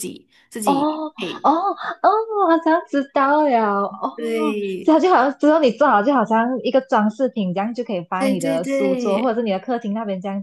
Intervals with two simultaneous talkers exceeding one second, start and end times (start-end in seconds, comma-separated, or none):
8.2-9.4